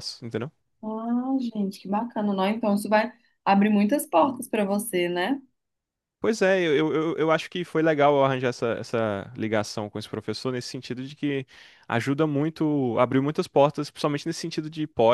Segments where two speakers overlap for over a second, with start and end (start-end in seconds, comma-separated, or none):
none